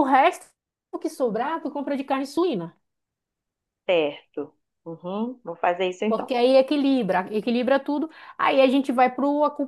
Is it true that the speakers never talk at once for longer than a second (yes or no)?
yes